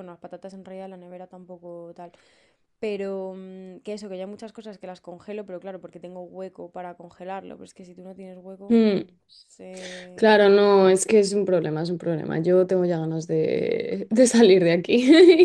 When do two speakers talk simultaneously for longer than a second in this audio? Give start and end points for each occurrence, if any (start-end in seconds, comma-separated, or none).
none